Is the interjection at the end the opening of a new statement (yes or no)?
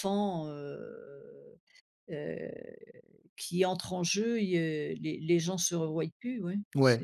yes